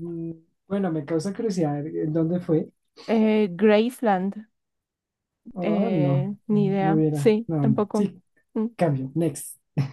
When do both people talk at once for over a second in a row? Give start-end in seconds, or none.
5.6-8.1